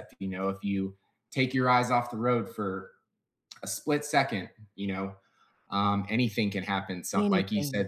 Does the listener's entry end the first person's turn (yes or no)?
no